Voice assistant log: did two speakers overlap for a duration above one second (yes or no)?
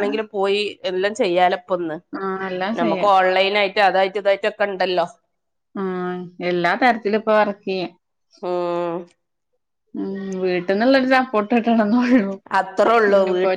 no